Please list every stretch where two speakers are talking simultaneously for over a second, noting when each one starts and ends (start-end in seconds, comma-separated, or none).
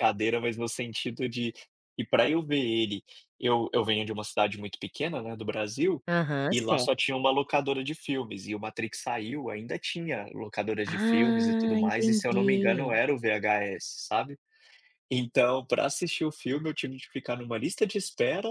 10.9-13.0